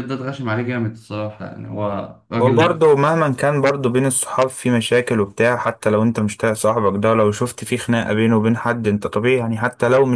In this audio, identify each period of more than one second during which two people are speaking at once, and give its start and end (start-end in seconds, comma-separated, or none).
none